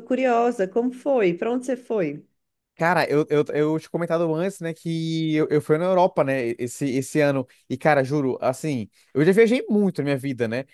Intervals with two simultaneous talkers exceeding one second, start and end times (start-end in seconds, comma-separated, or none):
none